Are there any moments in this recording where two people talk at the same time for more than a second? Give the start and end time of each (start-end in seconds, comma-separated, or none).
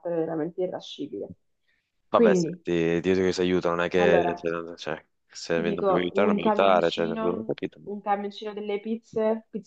5.5-8.0